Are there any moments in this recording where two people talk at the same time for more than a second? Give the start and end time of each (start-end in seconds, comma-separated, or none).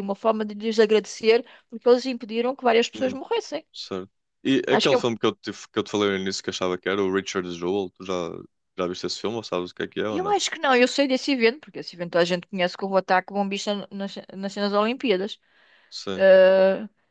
none